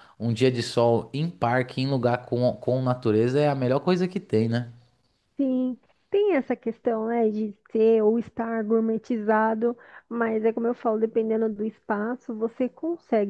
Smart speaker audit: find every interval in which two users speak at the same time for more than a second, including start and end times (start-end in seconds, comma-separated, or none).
none